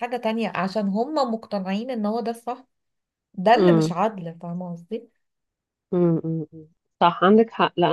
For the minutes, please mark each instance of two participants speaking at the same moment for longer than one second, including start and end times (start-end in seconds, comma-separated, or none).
none